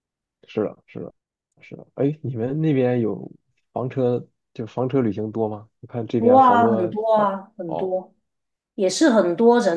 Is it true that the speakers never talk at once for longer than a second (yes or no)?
no